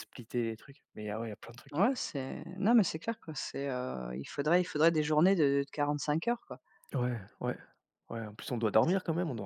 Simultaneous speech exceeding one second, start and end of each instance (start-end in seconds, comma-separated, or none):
none